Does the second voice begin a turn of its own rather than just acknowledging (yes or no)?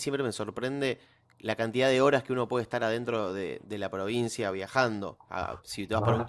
no